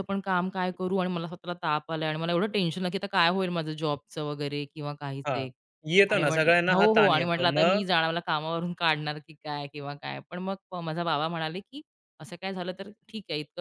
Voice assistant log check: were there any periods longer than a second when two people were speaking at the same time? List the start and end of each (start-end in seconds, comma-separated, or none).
6.1-7.8